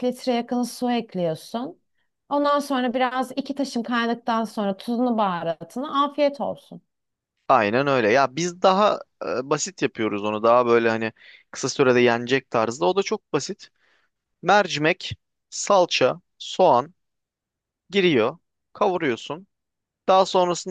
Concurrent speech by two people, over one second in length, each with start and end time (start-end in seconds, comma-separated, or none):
none